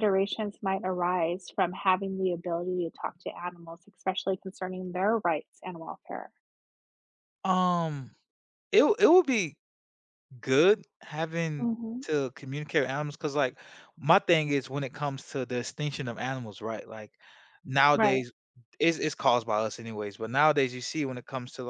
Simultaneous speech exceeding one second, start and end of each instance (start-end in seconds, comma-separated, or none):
none